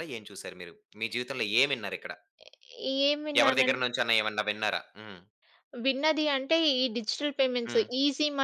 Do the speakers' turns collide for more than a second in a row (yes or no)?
no